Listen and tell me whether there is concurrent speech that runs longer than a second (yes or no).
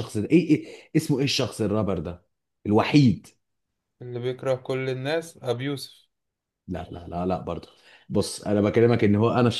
no